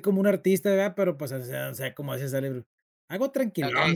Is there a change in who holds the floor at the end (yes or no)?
yes